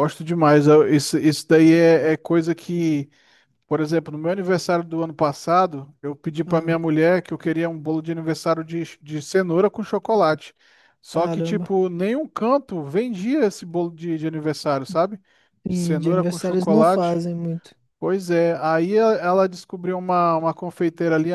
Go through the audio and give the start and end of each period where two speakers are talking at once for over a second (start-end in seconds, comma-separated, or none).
15.7-17.2